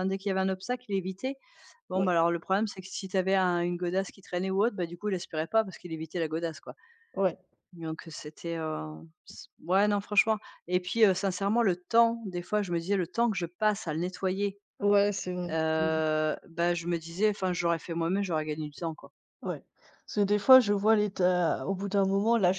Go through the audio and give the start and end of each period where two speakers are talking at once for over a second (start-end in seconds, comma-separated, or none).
none